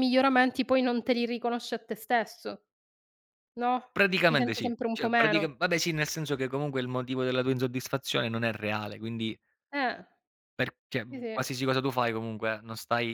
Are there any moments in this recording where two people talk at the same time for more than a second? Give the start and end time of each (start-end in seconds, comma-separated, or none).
4.3-5.6